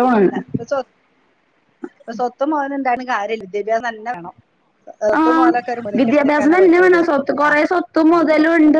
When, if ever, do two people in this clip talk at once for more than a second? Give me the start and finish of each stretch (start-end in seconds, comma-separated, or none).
none